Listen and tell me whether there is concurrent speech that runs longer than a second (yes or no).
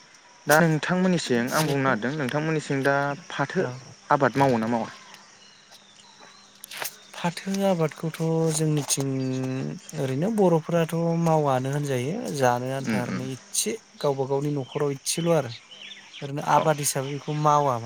no